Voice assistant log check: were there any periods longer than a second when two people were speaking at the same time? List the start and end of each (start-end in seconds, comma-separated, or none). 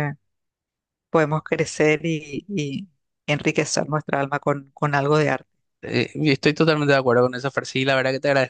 none